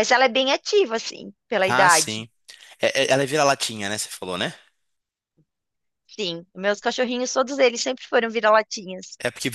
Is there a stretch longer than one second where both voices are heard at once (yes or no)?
no